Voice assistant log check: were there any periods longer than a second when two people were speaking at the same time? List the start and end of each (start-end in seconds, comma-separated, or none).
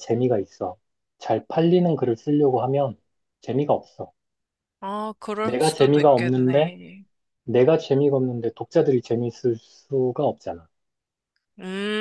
5.4-6.8